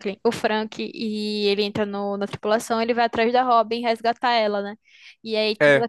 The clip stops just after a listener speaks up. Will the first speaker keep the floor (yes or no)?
yes